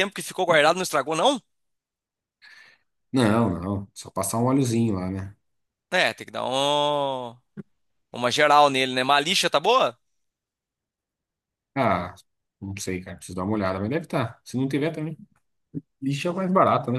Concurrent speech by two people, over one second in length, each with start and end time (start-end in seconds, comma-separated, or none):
none